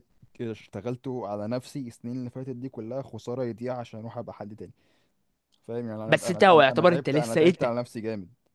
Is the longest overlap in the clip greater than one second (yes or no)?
yes